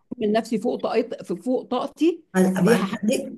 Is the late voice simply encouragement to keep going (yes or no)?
no